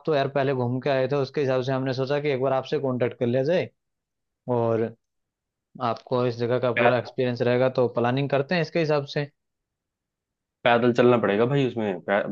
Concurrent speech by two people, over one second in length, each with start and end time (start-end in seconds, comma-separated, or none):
none